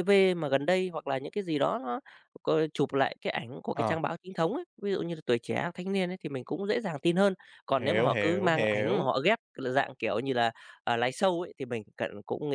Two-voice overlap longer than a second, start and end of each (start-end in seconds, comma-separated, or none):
7.8-9.2